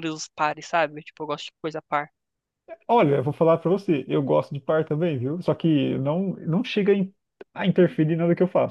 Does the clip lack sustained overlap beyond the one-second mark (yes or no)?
yes